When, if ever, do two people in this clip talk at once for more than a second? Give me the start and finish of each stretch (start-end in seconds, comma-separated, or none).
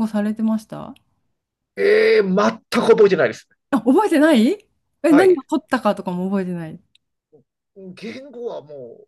none